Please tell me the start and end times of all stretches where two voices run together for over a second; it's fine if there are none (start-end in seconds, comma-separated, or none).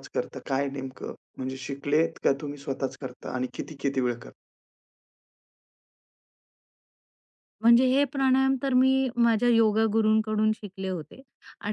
none